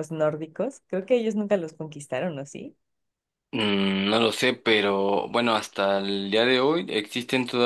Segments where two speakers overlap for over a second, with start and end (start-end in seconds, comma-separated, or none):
none